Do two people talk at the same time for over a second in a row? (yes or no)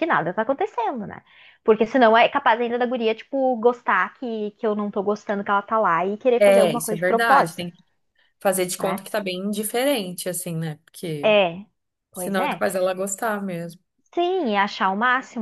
yes